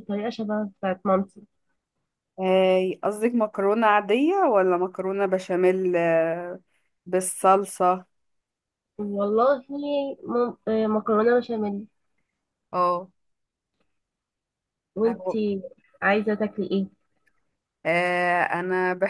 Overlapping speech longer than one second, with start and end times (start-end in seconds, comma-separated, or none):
none